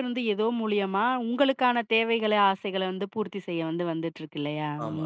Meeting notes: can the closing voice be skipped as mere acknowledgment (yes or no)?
no